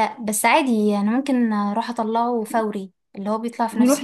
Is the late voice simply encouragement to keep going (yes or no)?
no